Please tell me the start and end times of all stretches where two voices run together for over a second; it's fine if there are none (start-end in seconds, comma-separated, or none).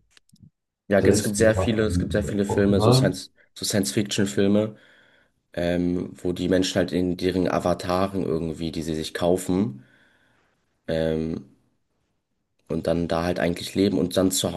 1.0-3.1